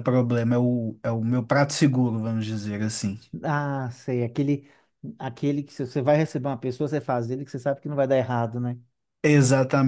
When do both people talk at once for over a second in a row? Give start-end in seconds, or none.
none